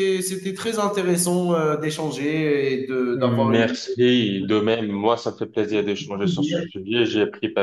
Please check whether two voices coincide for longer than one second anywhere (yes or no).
yes